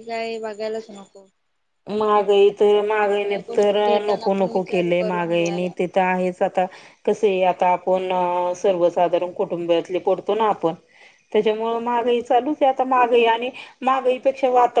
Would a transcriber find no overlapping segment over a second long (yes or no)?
no